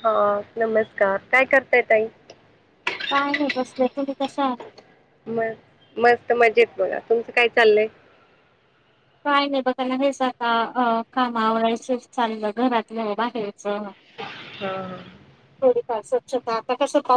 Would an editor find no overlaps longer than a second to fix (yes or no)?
yes